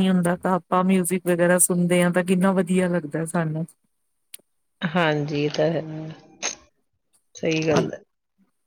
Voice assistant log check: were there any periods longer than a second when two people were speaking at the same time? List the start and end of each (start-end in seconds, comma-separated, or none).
none